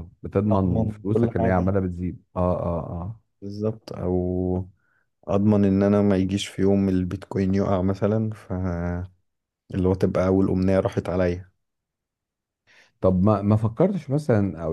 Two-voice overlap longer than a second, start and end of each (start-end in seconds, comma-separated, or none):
0.5-1.7